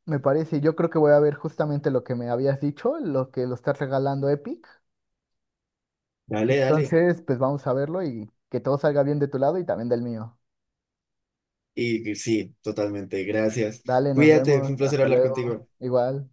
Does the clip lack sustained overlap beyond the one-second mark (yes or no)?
no